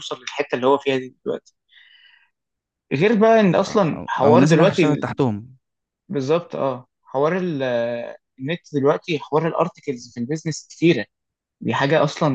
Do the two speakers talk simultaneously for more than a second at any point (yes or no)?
yes